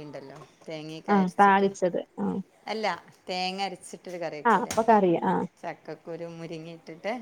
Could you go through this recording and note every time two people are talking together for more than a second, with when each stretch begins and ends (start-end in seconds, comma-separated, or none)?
none